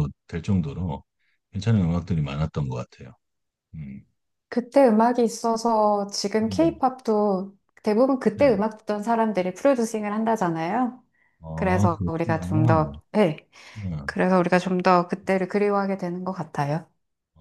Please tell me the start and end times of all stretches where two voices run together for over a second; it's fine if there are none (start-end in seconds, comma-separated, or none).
11.5-13.0